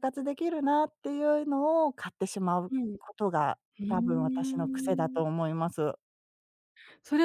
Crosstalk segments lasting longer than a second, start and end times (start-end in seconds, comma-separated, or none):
3.8-5.2